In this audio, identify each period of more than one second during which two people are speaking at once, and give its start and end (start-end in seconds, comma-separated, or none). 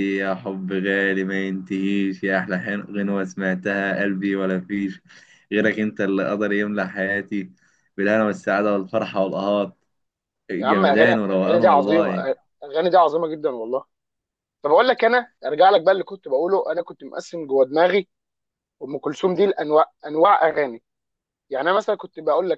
10.6-12.1